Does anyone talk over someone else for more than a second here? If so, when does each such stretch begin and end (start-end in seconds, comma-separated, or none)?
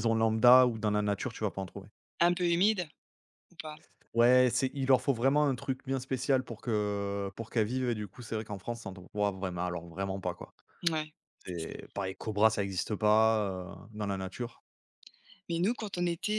none